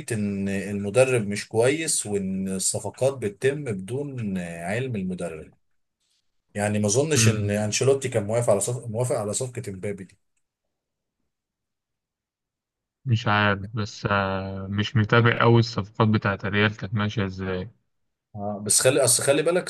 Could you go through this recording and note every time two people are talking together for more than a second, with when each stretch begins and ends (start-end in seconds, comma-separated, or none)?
none